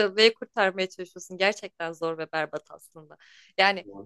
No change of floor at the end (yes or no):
yes